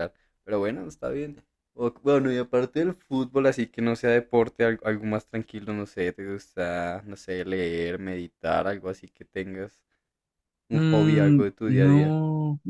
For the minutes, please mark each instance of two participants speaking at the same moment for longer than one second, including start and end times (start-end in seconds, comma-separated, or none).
10.7-12.2